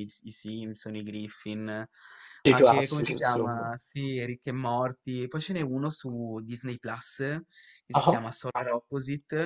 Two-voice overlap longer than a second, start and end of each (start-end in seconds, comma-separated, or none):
2.5-3.7